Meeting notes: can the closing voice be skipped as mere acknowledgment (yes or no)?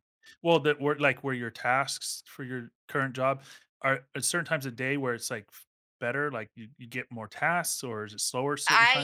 no